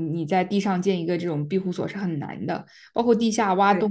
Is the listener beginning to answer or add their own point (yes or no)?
no